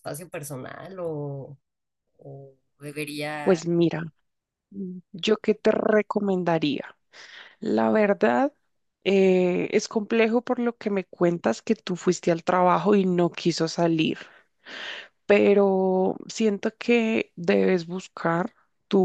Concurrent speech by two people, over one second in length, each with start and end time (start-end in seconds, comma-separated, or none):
none